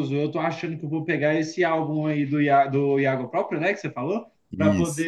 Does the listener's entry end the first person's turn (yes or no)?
no